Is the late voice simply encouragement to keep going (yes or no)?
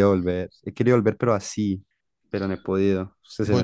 no